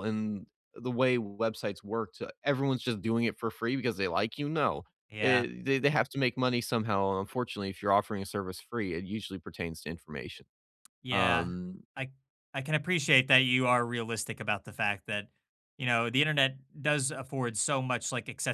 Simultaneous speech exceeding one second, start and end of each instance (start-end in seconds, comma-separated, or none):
none